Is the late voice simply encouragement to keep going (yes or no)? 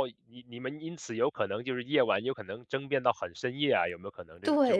no